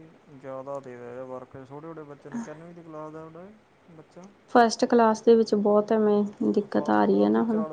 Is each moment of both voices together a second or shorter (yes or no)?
yes